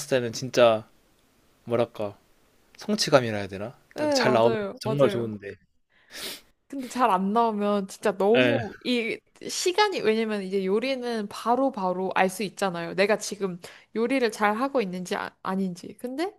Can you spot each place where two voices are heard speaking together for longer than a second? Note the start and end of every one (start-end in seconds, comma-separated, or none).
3.9-5.4